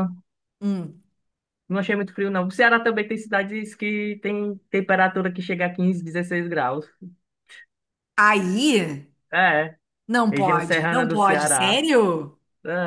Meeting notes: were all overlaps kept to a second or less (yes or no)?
no